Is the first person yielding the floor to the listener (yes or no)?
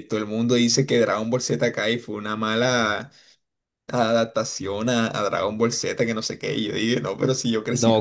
yes